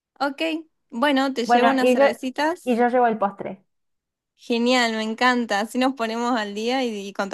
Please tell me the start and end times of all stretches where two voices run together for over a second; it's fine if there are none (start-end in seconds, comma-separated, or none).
none